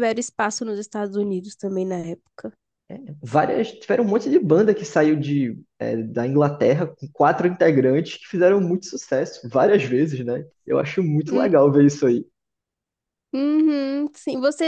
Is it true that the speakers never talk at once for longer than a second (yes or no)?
yes